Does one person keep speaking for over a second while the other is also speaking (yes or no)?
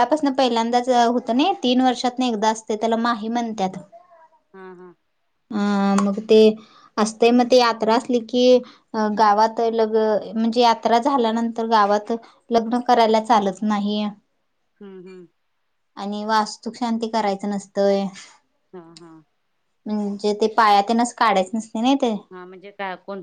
no